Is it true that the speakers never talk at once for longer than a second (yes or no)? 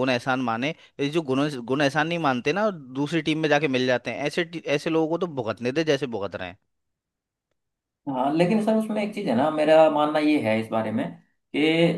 yes